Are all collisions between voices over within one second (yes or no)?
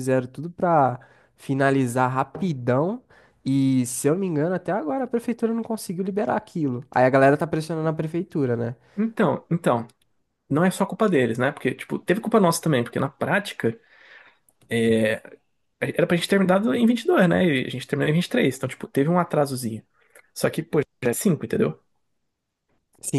yes